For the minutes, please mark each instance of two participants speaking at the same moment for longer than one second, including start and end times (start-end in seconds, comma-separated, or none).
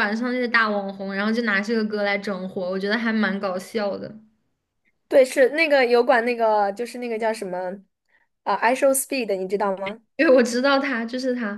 none